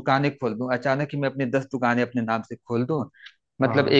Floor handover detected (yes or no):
no